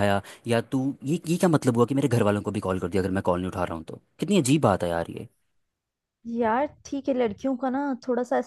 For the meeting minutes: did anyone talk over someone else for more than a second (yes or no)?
no